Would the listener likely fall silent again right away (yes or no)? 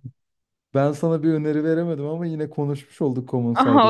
no